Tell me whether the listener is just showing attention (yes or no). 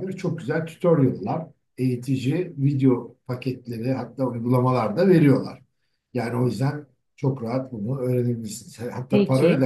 yes